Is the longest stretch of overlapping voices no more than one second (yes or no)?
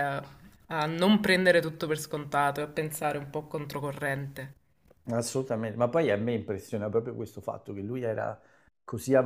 yes